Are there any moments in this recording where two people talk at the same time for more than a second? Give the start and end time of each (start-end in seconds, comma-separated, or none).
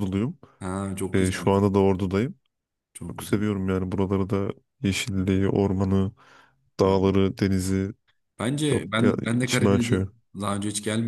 8.7-10.0